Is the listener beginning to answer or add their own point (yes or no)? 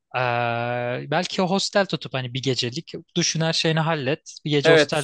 yes